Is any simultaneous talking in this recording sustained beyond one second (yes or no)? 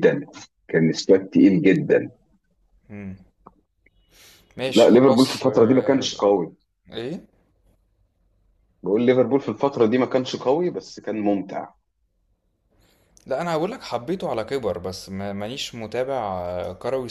yes